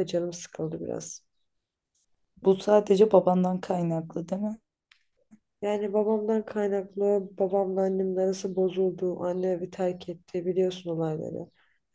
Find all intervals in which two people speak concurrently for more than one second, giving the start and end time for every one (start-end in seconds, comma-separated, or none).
none